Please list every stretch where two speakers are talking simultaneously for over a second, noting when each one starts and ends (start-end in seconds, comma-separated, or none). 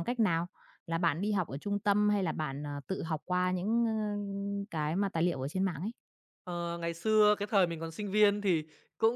none